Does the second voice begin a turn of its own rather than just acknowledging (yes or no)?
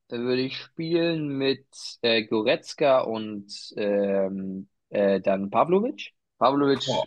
no